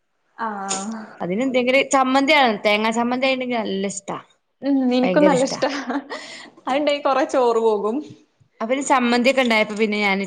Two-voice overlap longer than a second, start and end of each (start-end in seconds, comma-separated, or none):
none